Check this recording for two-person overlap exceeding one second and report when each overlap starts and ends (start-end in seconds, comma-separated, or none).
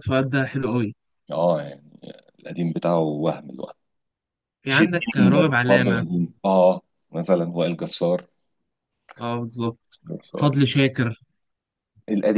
4.7-6.1